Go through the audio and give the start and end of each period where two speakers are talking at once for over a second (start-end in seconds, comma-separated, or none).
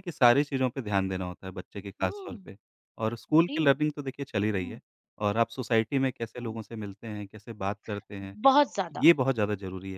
none